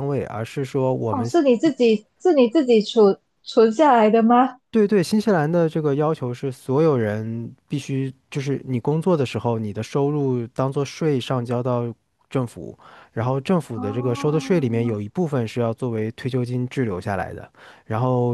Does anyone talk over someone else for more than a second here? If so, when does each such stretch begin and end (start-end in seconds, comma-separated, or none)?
13.8-15.0